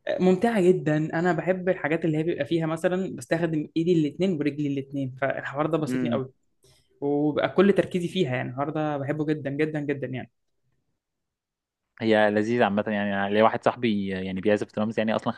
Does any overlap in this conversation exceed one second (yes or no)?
no